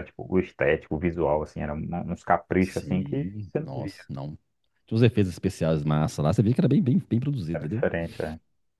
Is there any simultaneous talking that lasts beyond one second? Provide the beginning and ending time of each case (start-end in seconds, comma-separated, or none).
2.6-3.9